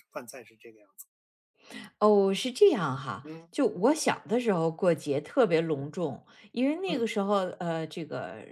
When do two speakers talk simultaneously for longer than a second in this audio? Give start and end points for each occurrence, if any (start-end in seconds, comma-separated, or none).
none